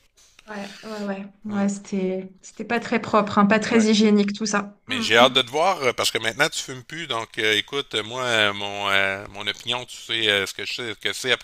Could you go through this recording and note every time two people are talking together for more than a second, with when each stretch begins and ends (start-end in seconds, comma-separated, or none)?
none